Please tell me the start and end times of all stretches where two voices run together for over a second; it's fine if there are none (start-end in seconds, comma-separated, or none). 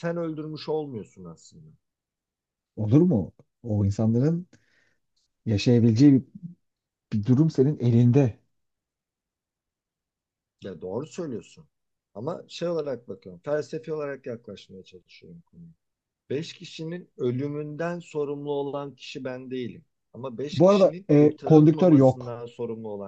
20.5-22.3